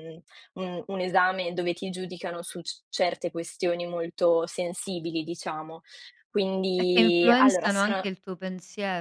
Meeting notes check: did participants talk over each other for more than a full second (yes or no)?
yes